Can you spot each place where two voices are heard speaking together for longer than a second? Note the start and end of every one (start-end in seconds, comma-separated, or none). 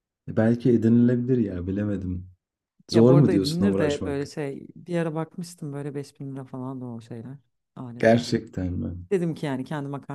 2.9-4.3